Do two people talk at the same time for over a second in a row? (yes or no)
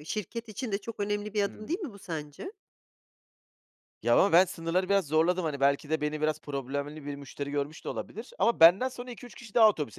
no